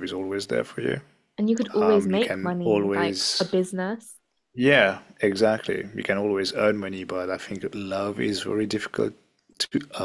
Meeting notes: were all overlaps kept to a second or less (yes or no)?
no